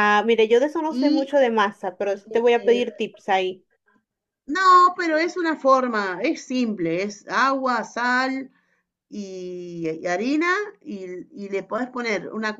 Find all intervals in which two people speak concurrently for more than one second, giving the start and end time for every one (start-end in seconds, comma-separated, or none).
none